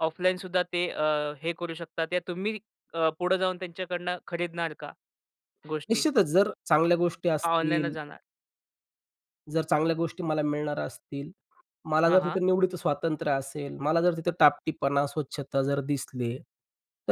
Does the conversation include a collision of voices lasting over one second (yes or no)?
no